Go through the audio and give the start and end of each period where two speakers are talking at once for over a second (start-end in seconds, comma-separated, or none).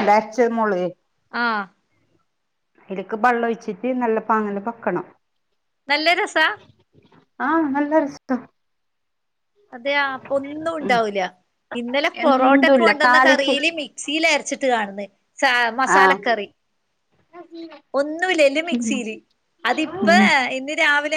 12.2-13.5